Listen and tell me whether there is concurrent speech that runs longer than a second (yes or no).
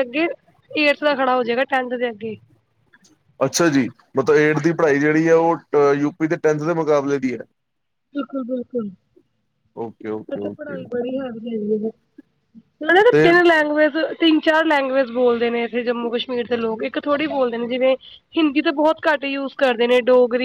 no